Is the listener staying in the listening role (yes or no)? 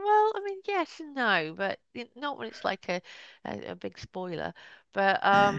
no